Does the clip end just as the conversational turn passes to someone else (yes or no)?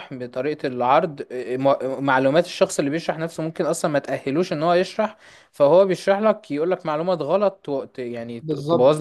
yes